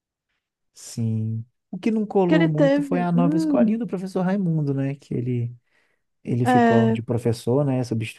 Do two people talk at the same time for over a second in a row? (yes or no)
yes